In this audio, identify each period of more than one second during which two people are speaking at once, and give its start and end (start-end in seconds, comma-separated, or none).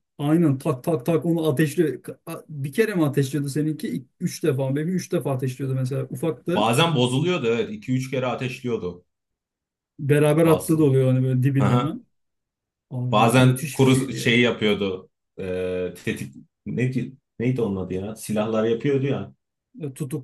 13.1-14.4